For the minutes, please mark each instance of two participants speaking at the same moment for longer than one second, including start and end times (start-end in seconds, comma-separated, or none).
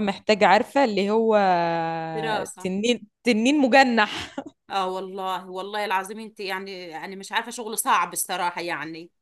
none